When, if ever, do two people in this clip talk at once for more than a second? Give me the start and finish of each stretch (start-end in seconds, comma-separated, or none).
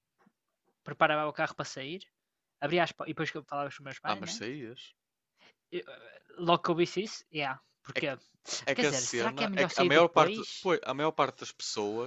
8.7-10.7